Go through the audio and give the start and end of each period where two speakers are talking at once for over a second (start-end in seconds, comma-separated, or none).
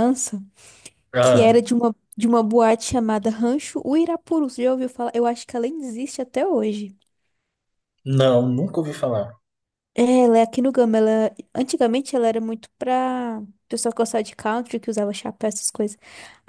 none